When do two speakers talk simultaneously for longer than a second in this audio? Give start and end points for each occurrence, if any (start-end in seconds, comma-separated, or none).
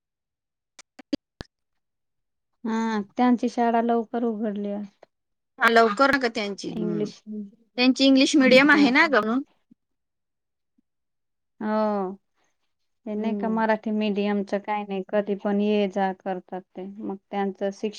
none